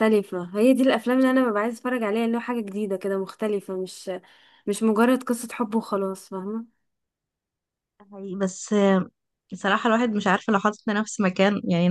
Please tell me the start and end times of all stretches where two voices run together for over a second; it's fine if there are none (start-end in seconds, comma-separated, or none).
none